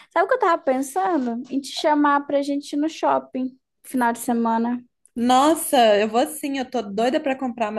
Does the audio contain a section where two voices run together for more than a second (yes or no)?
no